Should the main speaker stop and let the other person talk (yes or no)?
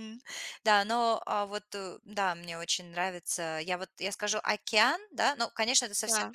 no